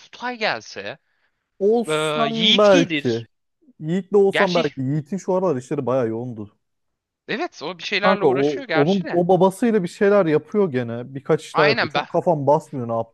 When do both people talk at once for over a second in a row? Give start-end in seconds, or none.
1.9-3.2, 8.0-9.2